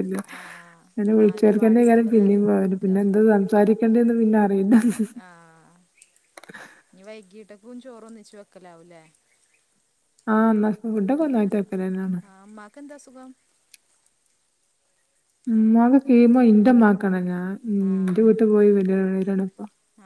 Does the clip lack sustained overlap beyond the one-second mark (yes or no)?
no